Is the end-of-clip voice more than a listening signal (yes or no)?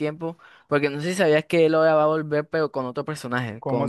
yes